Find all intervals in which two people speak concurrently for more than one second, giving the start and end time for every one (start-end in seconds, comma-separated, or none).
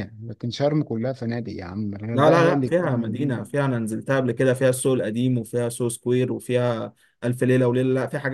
2.1-3.4